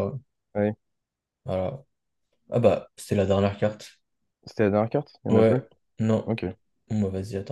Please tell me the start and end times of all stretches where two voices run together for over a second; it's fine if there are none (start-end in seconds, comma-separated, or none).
none